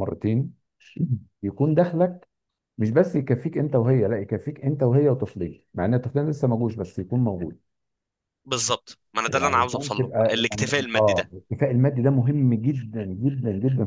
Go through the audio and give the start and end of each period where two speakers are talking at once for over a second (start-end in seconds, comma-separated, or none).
9.3-11.3